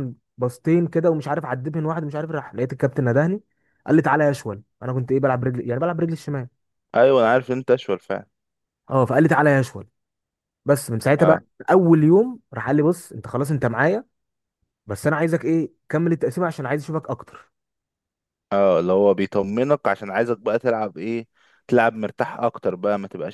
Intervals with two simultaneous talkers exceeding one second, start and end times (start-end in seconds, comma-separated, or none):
none